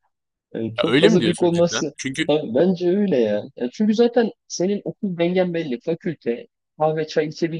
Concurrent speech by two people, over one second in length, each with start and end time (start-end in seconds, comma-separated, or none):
0.8-2.3